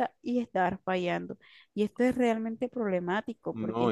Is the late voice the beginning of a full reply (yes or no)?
yes